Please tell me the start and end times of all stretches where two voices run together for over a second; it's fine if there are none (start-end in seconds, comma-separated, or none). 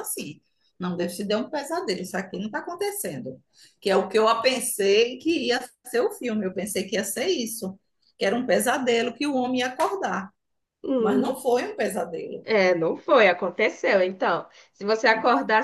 none